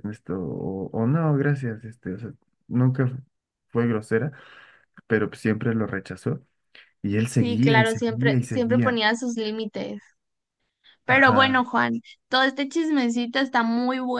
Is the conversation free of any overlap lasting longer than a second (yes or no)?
no